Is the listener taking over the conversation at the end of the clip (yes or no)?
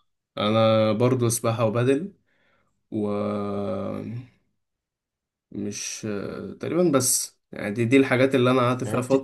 no